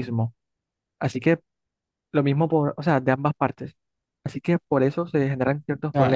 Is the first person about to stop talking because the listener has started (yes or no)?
yes